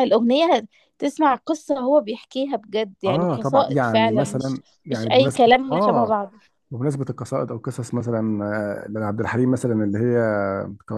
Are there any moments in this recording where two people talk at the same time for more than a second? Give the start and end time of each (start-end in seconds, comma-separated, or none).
3.1-6.3